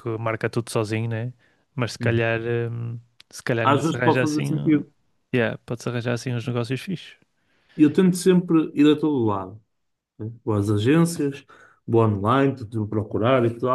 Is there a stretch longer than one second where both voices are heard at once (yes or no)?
yes